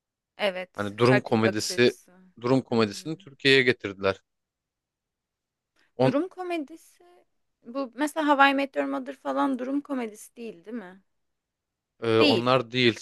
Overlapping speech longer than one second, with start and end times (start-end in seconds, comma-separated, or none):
0.8-2.0